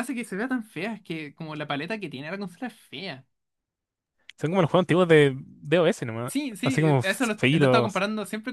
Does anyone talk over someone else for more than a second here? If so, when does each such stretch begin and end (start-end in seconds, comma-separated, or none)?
6.2-8.0